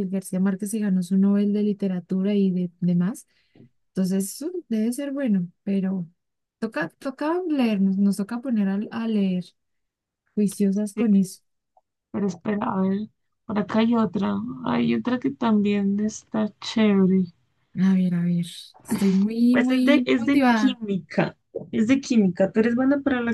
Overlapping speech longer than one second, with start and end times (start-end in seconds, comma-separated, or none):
19.5-20.8